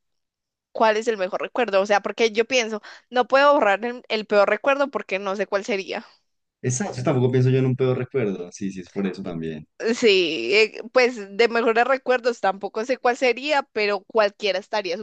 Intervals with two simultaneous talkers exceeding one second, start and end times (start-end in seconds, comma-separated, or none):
none